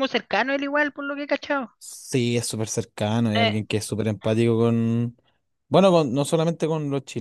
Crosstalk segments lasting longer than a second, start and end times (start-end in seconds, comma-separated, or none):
none